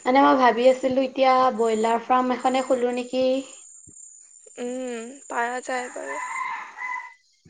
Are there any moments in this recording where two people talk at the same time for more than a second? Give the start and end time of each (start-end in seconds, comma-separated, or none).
none